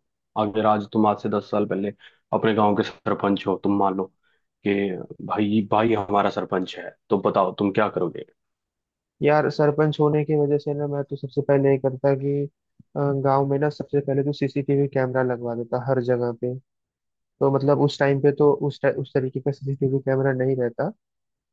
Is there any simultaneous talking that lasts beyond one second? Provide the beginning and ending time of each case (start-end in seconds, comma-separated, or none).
none